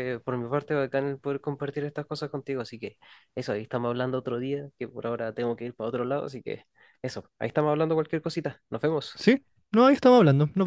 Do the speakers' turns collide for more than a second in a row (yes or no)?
no